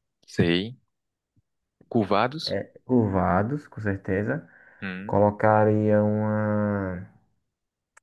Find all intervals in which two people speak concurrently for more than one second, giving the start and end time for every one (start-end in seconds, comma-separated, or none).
none